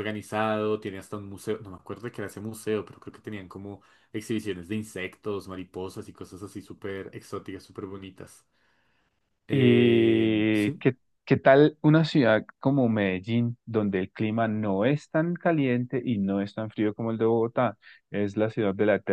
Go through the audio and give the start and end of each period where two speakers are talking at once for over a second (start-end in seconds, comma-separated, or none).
9.5-10.8